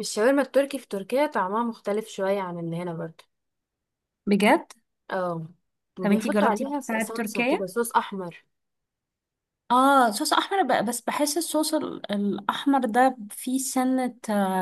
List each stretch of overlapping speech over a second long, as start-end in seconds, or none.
6.0-7.7